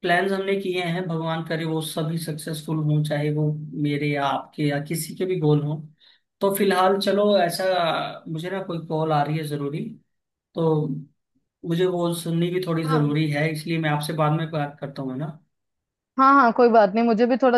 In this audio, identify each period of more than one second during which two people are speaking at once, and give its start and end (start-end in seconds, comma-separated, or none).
none